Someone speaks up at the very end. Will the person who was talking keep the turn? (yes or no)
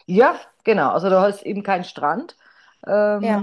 yes